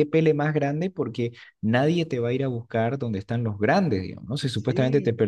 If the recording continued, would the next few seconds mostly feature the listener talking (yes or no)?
no